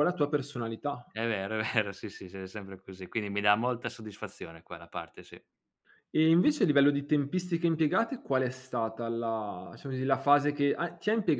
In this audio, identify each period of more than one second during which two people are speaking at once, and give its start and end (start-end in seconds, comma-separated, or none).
none